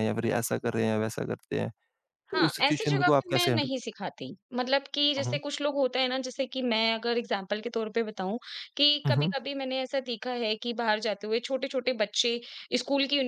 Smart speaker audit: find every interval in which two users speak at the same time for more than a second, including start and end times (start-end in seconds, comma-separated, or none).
2.3-3.7